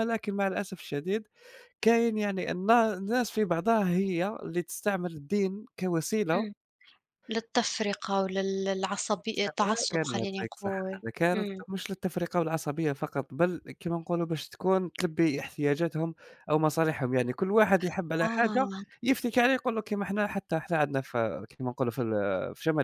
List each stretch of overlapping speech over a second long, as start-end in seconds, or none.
9.3-11.6